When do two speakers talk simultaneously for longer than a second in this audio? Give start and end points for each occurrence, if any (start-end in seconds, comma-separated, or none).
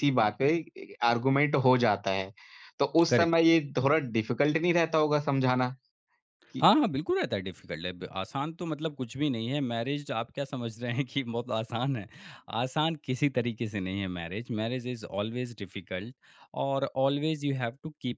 none